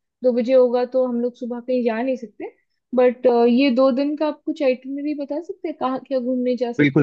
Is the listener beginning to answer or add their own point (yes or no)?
yes